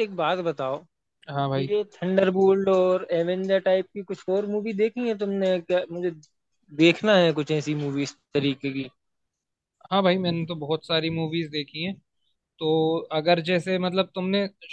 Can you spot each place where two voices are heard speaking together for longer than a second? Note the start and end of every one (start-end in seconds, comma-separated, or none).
none